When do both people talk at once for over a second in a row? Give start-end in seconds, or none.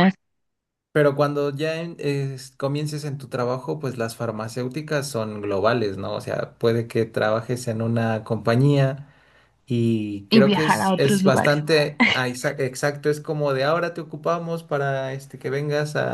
10.3-11.6